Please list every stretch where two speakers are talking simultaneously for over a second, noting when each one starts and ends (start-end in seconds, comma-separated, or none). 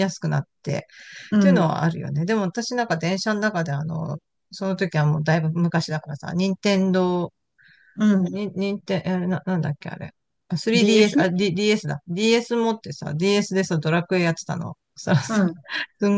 none